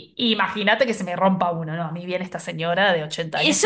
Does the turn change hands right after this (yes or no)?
yes